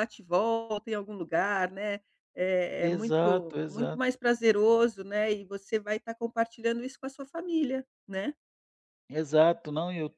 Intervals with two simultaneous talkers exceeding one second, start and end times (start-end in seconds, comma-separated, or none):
2.8-4.2